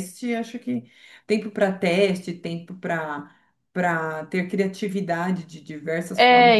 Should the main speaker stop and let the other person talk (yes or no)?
yes